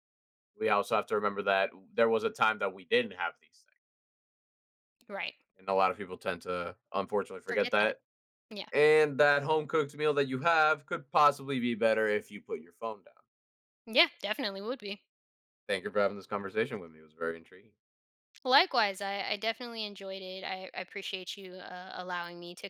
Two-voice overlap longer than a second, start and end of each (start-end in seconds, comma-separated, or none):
none